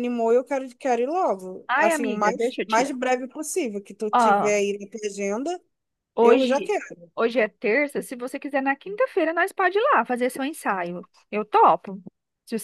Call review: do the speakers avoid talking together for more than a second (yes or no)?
no